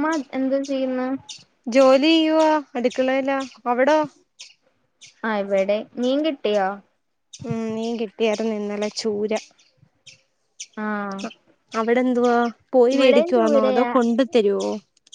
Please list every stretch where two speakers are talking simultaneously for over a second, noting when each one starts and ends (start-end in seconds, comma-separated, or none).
none